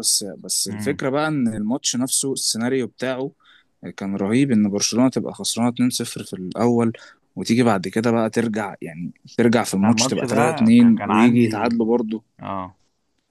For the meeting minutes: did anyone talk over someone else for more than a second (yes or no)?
yes